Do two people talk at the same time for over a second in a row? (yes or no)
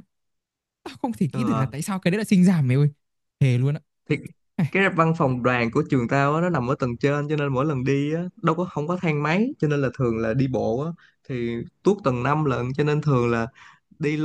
no